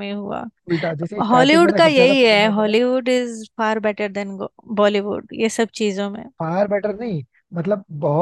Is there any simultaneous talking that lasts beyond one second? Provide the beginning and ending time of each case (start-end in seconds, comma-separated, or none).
1.3-2.8